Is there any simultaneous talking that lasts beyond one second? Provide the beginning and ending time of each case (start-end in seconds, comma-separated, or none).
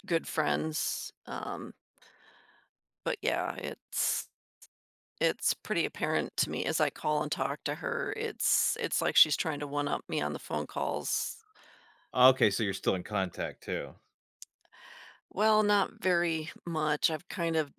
none